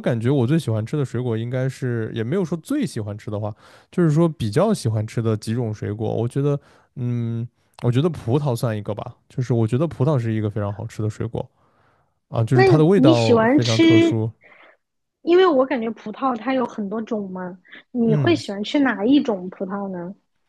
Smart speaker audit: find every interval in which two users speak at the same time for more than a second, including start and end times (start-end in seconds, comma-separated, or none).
12.5-14.1